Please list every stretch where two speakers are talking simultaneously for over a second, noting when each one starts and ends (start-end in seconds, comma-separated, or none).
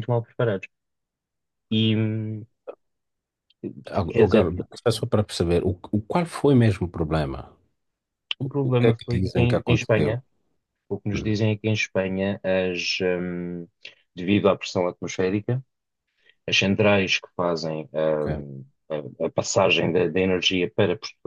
8.7-10.2